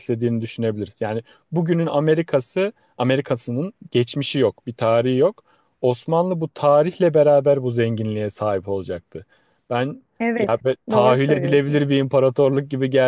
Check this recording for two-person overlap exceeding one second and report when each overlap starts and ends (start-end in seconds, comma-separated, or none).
10.2-11.8